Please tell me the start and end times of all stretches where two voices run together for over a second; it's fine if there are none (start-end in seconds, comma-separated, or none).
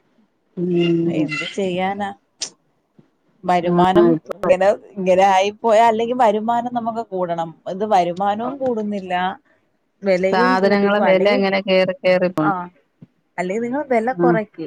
none